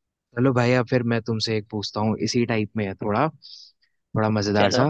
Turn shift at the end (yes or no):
no